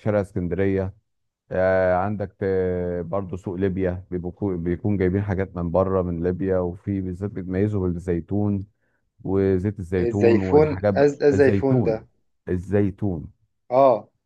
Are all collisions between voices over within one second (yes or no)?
no